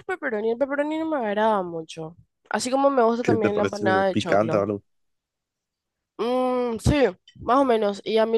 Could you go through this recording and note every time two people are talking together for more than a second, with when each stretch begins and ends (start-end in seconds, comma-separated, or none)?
3.2-4.6